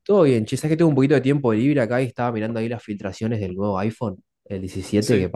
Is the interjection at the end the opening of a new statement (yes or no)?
no